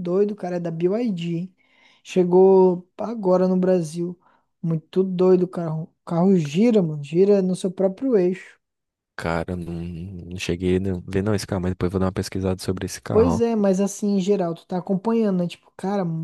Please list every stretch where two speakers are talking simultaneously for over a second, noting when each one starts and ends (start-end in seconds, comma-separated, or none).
none